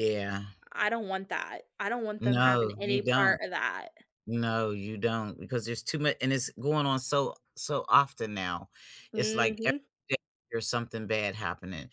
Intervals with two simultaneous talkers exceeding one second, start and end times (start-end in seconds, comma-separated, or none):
2.2-3.4